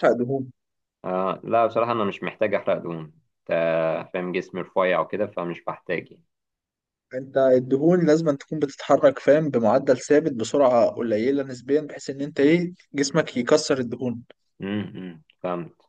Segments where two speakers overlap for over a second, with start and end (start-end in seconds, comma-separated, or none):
none